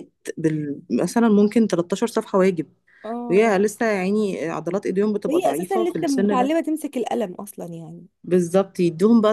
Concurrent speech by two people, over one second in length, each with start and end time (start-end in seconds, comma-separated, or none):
5.3-6.5